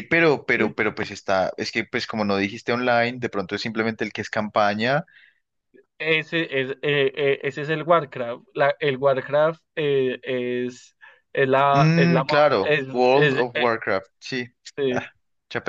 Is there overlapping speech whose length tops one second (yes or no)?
yes